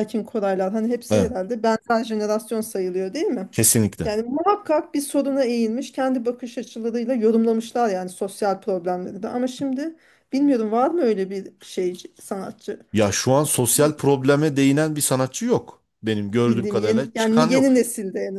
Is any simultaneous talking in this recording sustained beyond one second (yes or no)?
yes